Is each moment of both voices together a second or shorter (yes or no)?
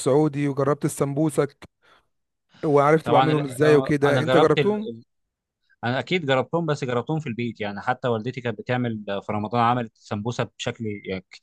no